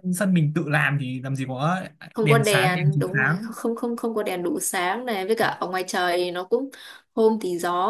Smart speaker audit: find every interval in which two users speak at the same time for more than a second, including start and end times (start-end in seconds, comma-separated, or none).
2.2-3.5